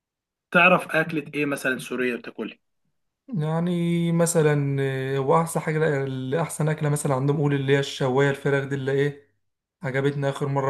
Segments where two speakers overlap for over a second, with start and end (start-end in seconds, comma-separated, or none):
none